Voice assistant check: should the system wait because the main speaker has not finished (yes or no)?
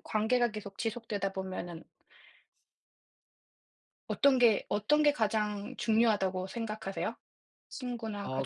no